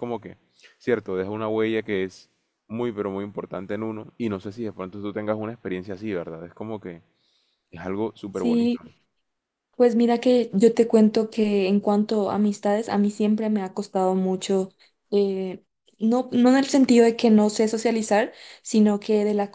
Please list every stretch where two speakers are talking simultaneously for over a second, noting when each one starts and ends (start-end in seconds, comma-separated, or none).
none